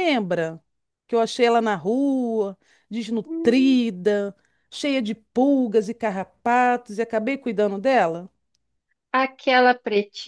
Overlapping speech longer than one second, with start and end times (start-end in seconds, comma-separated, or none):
none